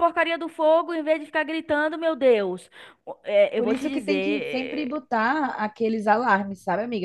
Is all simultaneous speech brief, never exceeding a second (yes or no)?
no